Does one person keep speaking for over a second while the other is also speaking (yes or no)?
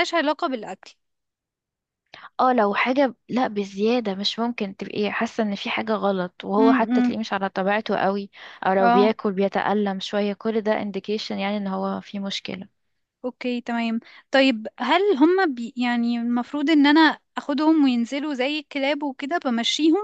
no